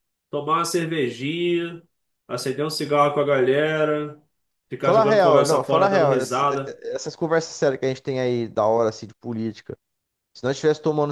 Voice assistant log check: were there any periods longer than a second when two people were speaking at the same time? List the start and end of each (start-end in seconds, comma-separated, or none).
4.8-6.5